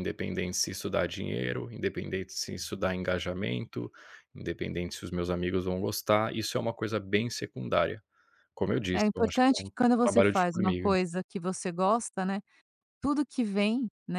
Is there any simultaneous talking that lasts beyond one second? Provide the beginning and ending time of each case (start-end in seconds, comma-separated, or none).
8.9-10.9